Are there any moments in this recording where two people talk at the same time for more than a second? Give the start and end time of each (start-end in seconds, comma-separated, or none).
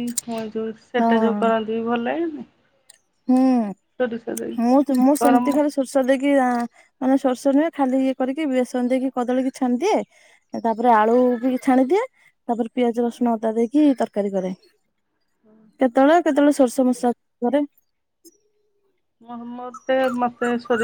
4.0-5.6